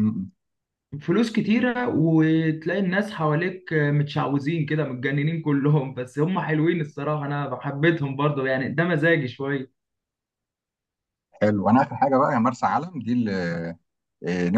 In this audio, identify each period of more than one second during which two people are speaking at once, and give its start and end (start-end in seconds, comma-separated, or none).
none